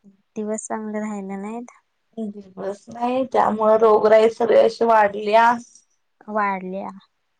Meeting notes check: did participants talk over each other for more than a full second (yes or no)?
no